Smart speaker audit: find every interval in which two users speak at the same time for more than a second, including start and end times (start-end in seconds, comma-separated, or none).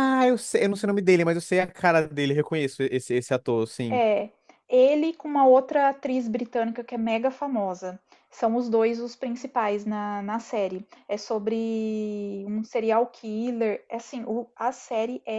none